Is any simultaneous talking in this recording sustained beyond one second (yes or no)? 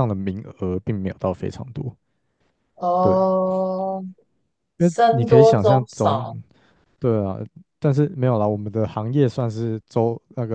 yes